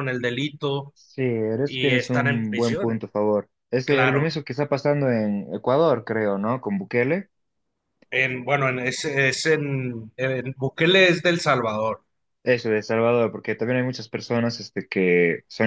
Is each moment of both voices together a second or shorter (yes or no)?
no